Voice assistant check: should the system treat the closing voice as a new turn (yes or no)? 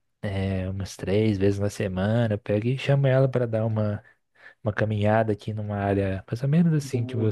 no